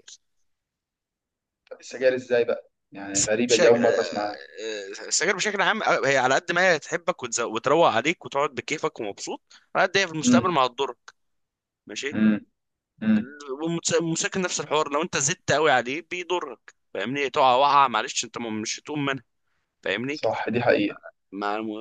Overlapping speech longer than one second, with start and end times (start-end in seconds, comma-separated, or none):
3.1-4.3